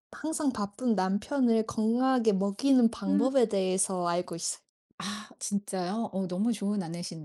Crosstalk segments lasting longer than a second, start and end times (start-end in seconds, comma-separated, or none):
none